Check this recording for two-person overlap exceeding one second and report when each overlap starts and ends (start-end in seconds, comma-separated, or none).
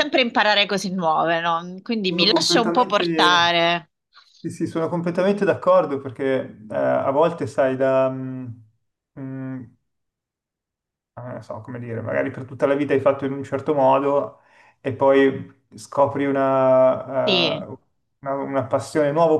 2.1-3.6